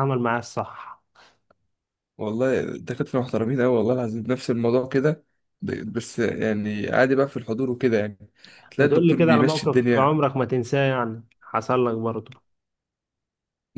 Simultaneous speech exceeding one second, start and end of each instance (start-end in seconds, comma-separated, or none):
8.8-10.2